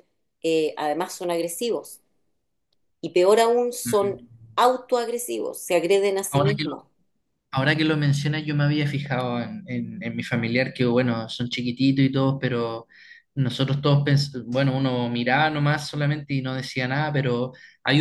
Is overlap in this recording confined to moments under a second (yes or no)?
yes